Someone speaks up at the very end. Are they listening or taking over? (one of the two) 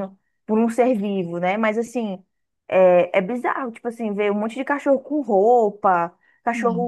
listening